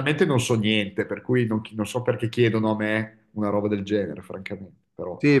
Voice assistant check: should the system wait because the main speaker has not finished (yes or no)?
no